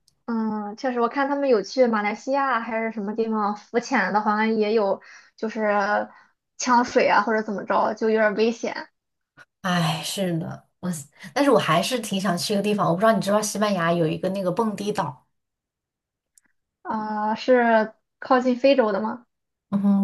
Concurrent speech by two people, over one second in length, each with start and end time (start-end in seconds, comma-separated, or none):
none